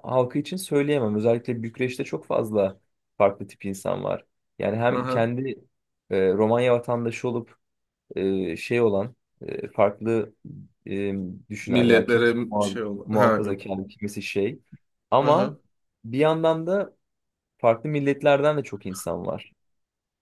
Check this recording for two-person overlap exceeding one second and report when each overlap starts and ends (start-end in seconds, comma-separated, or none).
11.7-13.6